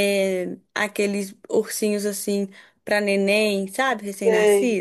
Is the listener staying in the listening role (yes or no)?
no